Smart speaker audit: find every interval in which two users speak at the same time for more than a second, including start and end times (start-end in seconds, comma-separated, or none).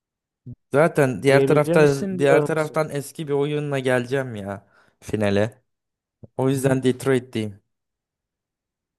1.3-2.8